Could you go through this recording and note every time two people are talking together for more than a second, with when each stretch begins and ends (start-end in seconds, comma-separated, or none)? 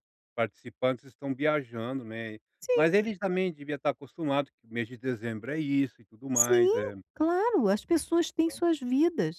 none